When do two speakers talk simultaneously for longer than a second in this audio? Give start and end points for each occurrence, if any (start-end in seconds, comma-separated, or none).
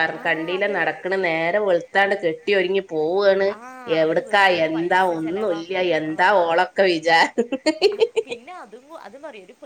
4.0-6.3